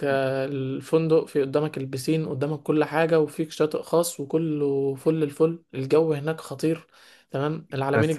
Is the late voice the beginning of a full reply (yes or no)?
no